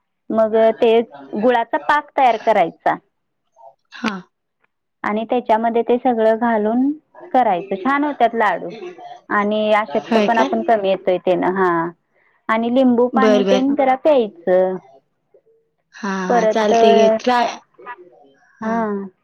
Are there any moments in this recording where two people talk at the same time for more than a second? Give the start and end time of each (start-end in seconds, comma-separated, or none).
none